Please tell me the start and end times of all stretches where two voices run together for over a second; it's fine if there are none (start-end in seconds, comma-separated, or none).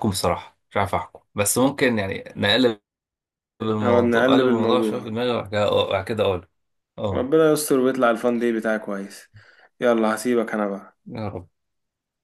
3.8-5.1